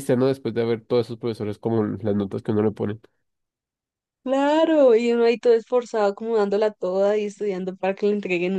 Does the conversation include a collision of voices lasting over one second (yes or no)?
no